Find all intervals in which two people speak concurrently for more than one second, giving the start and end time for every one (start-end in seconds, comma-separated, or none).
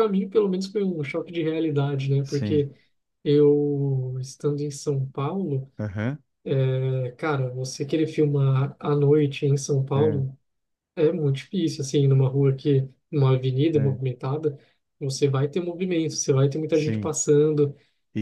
none